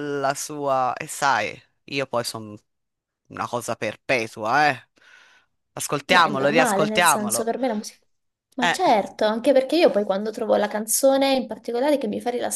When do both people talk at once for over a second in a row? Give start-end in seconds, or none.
6.0-7.5